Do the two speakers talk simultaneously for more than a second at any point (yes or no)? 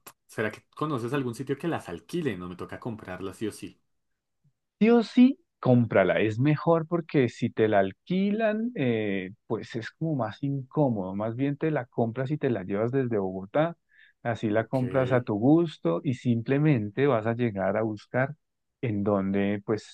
no